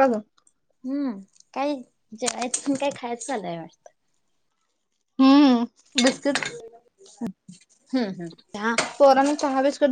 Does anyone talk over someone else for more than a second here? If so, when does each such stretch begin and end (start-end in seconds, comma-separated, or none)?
none